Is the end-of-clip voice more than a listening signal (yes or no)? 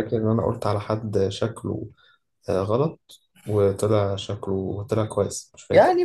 yes